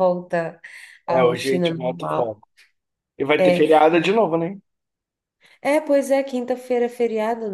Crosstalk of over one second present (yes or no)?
yes